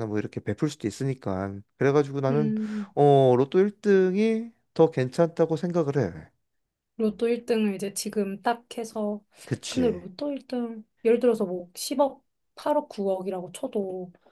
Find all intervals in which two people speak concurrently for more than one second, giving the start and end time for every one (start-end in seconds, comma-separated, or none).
none